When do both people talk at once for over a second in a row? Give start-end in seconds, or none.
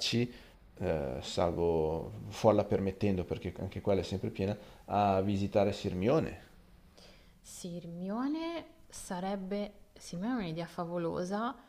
none